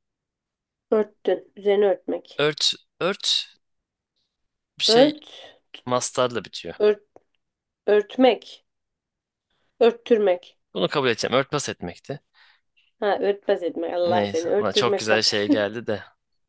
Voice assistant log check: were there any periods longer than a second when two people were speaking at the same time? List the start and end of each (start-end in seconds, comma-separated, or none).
14.1-15.3